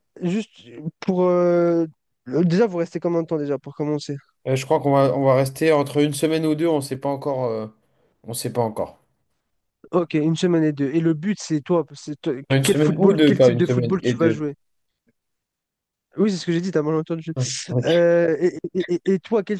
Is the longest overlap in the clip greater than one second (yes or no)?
yes